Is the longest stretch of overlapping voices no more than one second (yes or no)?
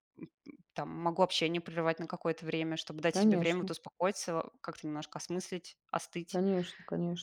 yes